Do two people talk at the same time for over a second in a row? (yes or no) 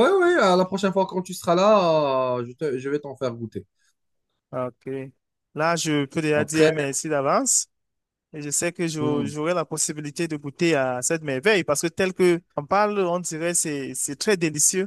no